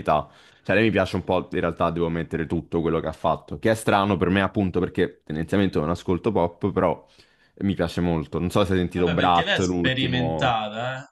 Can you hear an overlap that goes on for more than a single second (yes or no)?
yes